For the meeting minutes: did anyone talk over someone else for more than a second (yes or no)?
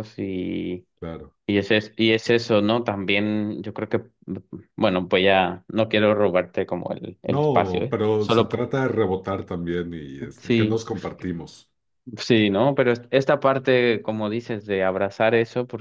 yes